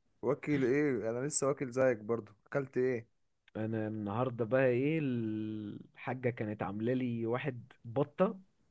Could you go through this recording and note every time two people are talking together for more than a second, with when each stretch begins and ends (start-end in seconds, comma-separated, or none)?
none